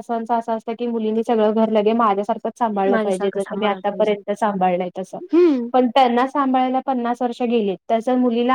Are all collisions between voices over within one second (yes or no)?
no